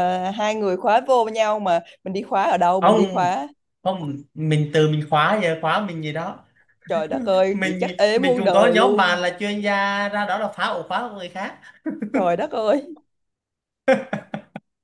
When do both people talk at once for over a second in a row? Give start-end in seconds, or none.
7.5-9.2